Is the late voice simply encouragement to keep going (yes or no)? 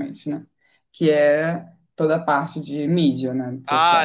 no